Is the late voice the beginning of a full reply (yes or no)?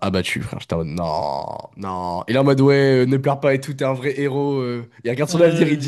no